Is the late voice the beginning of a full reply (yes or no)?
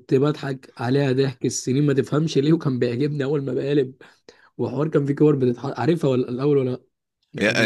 yes